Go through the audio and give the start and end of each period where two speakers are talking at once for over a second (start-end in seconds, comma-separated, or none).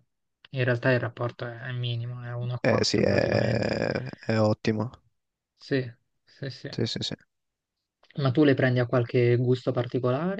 2.6-3.8